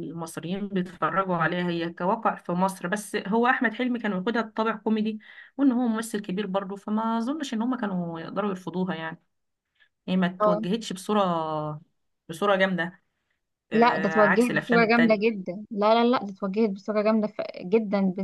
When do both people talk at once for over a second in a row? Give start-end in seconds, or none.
13.7-15.4